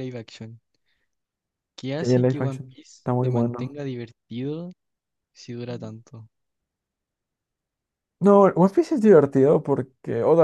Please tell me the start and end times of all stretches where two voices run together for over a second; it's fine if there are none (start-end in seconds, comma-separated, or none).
2.0-3.7